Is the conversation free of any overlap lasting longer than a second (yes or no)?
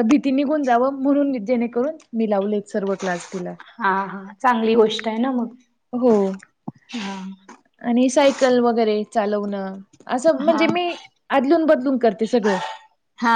yes